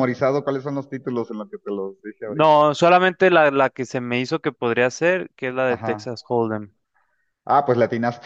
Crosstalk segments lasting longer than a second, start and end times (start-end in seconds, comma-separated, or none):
none